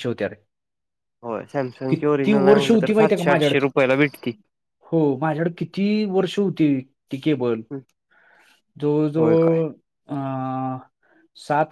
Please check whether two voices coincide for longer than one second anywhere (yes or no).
yes